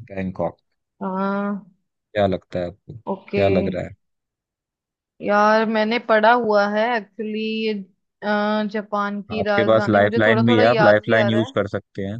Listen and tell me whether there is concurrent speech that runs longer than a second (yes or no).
yes